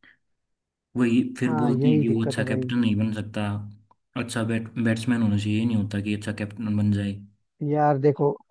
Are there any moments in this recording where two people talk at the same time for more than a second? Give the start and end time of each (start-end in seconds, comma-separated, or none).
1.4-2.7